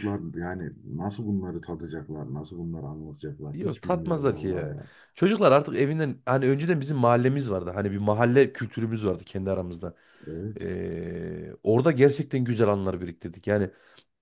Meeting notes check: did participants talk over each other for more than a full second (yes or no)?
yes